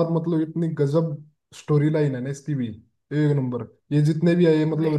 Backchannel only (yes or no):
yes